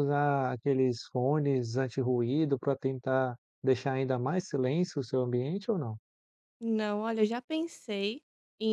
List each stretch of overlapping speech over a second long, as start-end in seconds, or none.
none